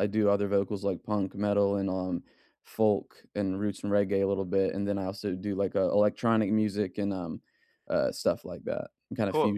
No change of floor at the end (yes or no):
no